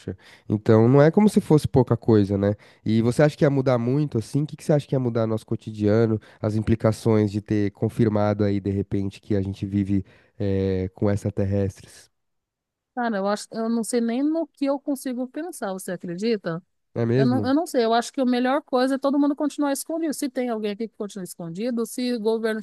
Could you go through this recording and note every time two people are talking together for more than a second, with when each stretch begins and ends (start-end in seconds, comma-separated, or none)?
none